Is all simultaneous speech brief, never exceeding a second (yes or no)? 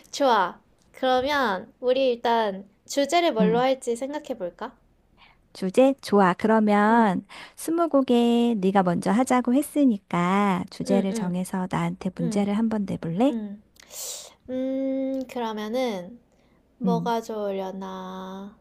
yes